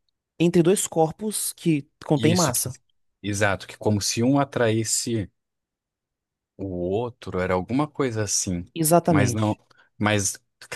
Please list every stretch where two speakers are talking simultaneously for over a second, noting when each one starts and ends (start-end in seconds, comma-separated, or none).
none